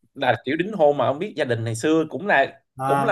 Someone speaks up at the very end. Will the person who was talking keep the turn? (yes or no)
no